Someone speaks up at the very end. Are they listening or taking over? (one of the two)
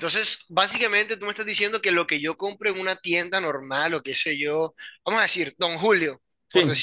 listening